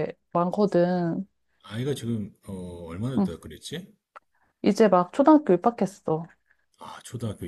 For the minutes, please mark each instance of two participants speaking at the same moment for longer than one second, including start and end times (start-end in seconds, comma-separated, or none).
none